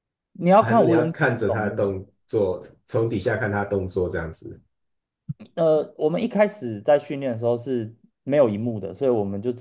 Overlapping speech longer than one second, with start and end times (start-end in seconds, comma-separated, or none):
0.6-1.9